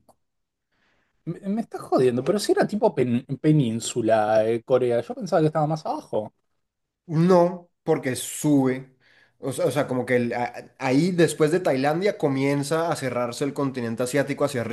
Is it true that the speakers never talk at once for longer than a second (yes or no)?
yes